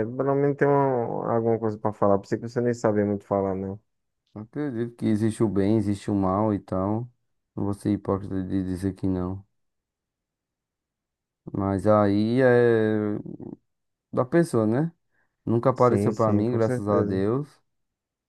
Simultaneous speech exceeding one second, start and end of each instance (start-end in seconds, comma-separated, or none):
15.7-17.2